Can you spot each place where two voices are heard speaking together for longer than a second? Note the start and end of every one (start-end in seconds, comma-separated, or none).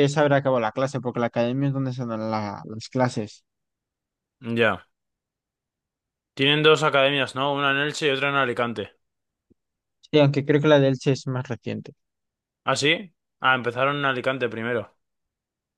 none